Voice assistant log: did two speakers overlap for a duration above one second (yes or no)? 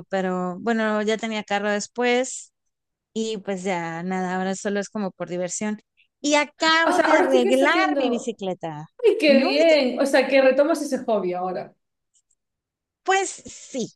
yes